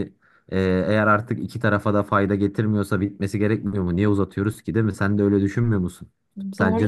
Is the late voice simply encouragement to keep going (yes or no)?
no